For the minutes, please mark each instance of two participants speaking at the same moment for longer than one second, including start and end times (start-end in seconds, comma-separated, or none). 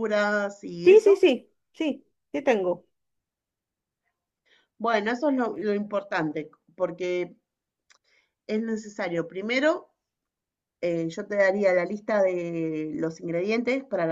none